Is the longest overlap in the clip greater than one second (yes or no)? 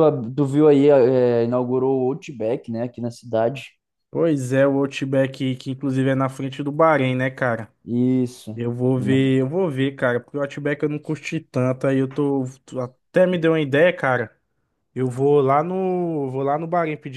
no